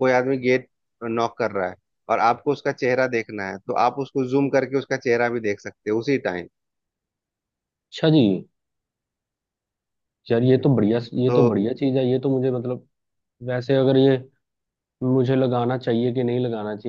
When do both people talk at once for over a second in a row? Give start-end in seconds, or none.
none